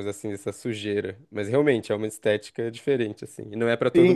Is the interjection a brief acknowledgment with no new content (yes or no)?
no